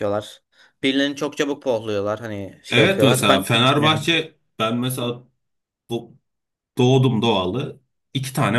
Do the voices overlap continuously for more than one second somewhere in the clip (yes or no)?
yes